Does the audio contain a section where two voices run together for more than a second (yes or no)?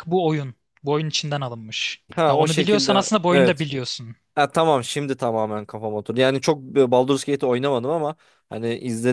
yes